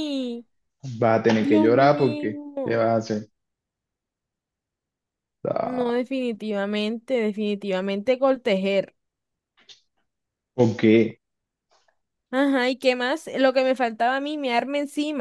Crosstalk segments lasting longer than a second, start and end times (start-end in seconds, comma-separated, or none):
1.4-3.0